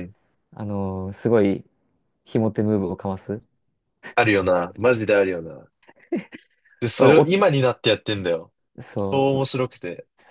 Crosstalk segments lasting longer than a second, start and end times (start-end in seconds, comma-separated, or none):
none